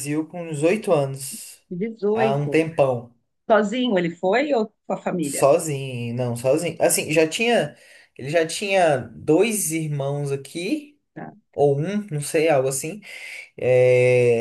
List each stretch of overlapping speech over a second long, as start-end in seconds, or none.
none